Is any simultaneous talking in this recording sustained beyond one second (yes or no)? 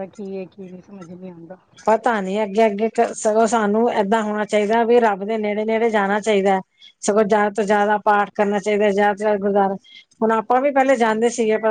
no